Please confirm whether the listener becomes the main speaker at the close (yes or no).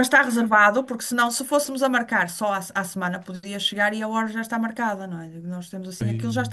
no